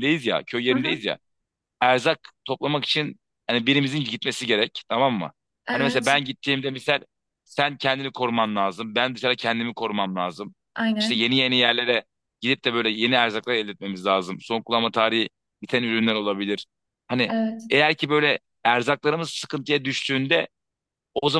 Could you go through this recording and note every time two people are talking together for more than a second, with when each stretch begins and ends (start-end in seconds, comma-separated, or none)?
none